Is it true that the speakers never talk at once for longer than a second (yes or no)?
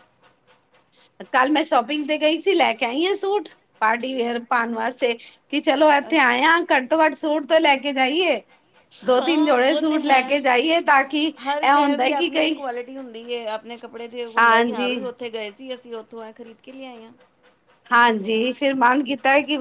no